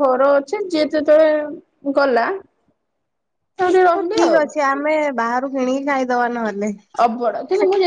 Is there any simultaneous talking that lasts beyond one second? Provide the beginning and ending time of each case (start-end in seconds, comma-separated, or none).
none